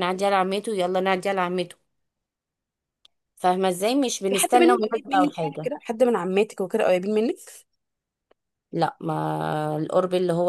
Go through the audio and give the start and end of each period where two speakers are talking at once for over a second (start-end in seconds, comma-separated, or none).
4.3-5.7